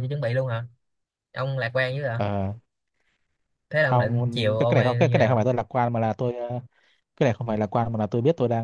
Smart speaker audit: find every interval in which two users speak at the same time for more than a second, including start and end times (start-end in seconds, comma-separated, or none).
3.8-5.4